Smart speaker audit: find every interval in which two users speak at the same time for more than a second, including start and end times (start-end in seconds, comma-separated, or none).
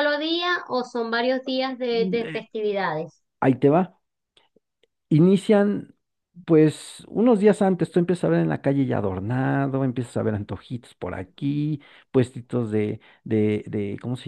none